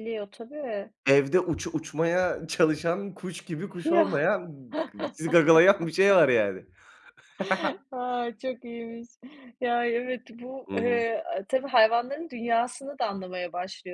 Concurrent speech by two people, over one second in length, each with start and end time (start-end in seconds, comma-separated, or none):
none